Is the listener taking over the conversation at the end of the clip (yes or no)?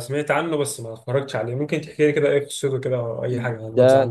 yes